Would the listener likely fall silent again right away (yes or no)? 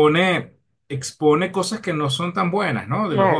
no